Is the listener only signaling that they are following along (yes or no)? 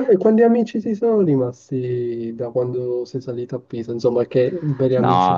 no